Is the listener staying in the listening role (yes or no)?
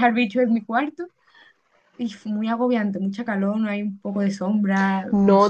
no